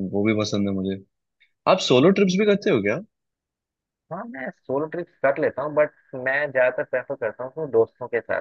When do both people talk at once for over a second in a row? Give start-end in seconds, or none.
none